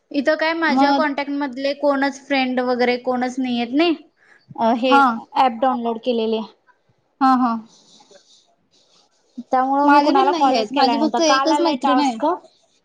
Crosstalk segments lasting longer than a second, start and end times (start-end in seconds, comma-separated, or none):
9.8-12.2